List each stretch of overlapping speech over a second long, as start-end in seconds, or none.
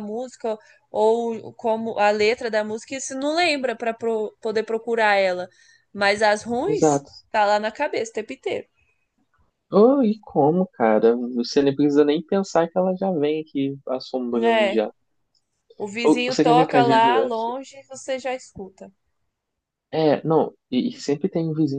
16.0-17.5